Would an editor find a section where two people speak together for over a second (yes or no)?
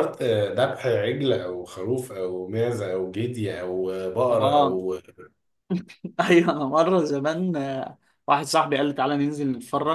no